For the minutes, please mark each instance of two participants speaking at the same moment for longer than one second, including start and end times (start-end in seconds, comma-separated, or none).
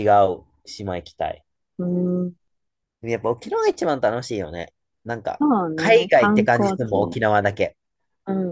5.4-7.2